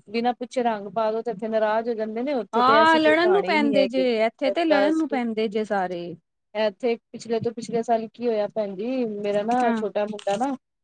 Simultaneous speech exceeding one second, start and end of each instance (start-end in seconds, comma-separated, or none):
2.5-4.0